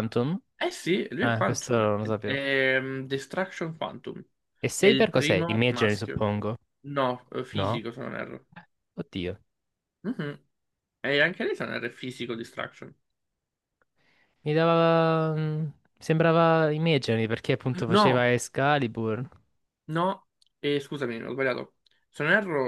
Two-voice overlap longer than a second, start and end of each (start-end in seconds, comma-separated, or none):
1.2-2.5, 4.8-6.2